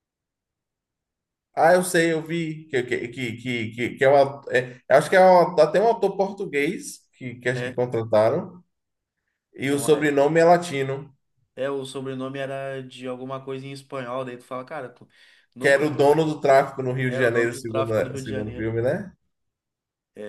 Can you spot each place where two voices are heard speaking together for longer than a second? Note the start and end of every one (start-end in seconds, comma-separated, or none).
17.0-18.7